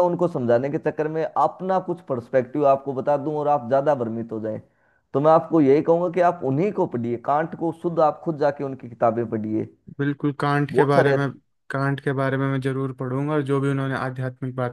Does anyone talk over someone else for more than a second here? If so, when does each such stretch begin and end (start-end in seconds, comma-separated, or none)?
none